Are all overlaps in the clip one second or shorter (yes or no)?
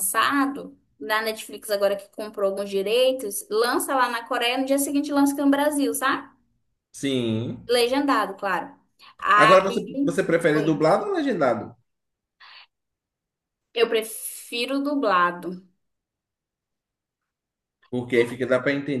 yes